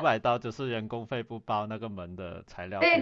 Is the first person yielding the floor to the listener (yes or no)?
yes